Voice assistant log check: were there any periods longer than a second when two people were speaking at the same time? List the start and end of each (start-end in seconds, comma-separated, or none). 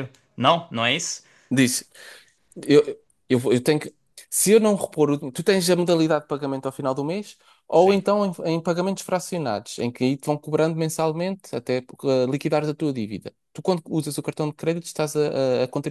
none